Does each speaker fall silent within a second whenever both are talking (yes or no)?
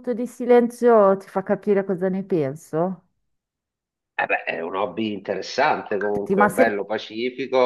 yes